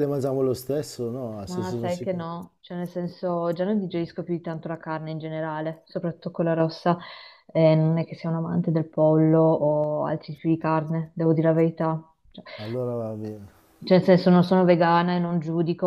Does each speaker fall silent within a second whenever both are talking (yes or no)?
yes